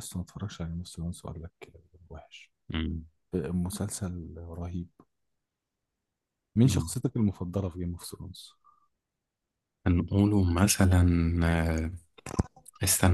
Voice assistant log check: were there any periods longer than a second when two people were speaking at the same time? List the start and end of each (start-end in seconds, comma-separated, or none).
none